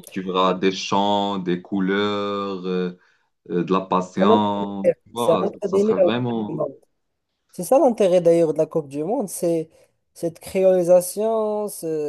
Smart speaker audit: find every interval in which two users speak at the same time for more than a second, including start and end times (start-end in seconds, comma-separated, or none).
5.1-6.6